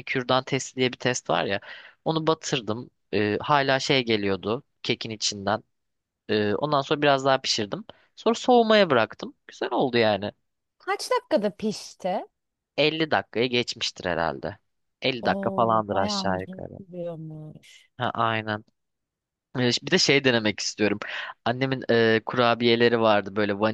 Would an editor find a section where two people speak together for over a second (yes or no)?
yes